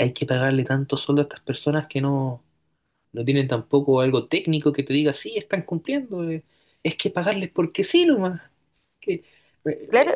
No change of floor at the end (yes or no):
no